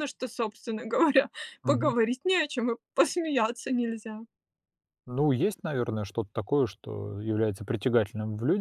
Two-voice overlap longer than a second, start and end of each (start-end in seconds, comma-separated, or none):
none